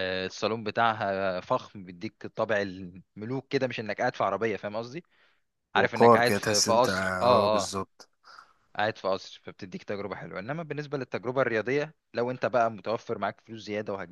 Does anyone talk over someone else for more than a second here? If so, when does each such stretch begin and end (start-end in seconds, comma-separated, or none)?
5.8-7.7